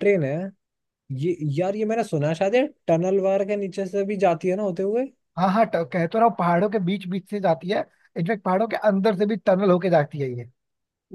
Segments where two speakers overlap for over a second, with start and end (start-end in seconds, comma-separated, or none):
none